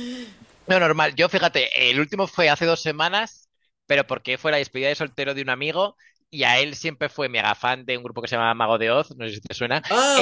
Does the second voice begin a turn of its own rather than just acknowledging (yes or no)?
yes